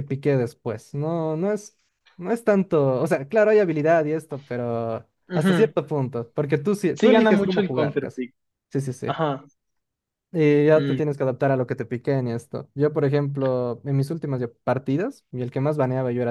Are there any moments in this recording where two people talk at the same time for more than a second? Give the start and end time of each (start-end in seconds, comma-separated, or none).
6.9-8.2